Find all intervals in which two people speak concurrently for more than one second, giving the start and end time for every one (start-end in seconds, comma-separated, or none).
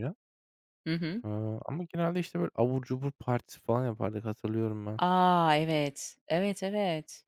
none